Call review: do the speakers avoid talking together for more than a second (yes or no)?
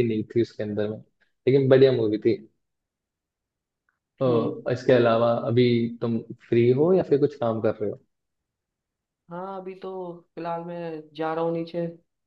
yes